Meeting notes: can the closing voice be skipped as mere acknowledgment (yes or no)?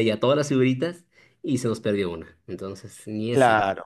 no